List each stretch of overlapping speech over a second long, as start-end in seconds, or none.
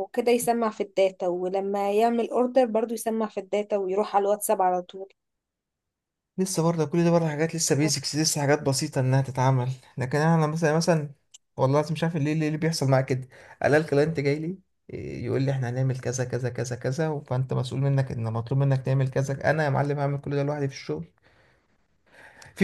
none